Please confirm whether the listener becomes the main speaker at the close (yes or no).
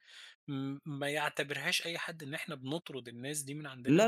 yes